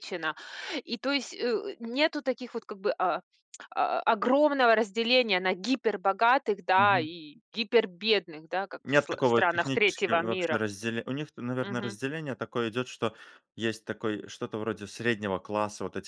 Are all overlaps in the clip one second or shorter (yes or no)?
no